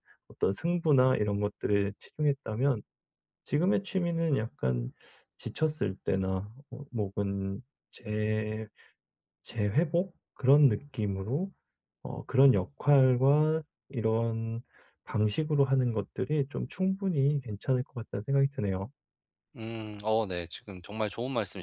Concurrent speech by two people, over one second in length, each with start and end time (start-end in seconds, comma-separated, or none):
none